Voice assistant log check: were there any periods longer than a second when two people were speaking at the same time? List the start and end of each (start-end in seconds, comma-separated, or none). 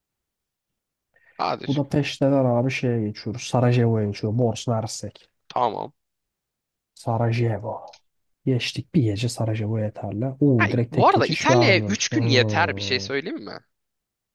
10.6-13.1